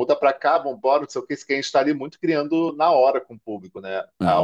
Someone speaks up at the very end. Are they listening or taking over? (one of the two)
taking over